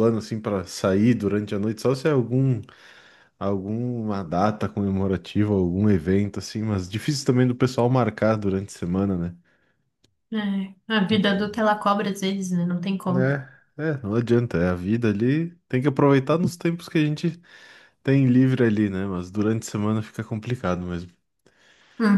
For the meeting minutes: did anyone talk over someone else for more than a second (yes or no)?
no